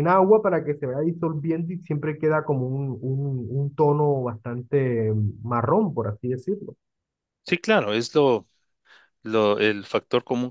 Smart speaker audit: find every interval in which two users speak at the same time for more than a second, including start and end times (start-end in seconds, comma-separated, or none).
none